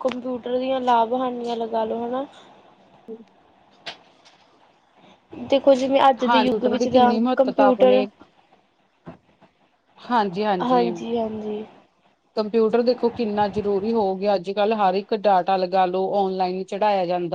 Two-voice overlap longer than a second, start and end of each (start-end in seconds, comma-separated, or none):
6.0-8.0